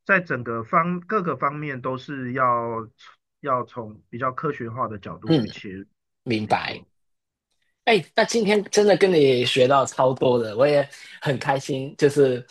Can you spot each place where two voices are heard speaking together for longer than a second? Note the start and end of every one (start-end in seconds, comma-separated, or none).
none